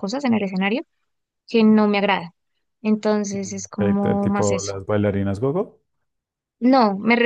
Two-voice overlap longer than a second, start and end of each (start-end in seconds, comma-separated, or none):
3.4-4.7